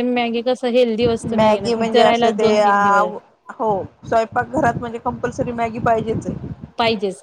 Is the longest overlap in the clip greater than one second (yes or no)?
yes